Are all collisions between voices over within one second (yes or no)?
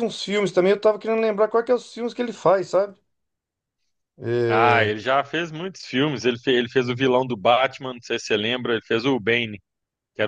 yes